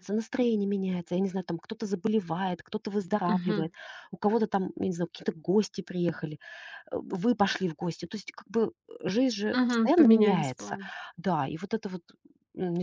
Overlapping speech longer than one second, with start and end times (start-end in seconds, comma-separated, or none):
9.5-10.8